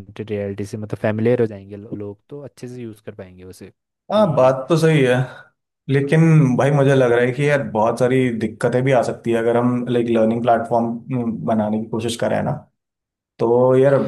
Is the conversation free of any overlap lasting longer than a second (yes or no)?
yes